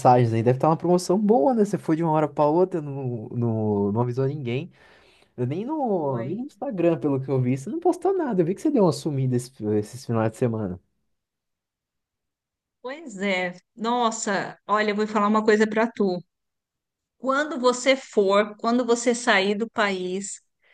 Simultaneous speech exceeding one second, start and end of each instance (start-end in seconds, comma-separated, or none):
none